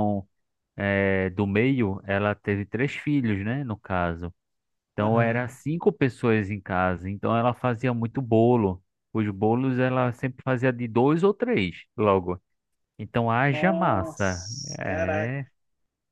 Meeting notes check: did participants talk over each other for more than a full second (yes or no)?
yes